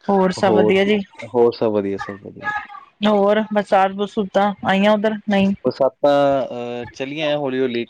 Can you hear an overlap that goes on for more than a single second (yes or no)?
no